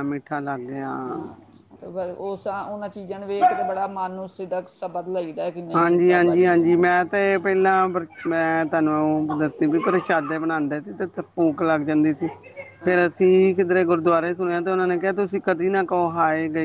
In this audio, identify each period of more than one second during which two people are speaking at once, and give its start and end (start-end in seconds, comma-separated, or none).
none